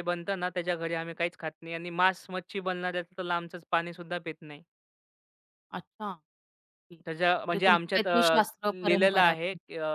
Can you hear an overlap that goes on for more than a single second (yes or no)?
yes